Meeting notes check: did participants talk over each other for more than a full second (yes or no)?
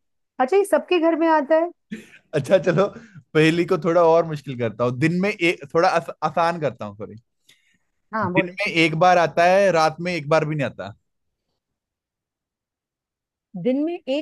no